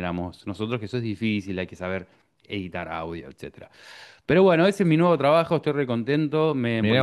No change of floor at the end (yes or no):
yes